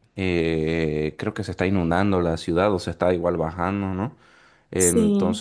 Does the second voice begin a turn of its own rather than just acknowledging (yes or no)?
no